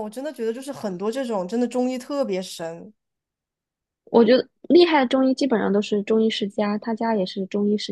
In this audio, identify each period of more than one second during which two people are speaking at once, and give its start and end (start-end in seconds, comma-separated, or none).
none